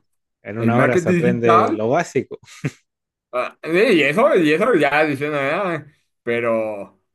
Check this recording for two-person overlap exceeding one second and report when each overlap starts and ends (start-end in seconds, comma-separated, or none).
0.6-1.8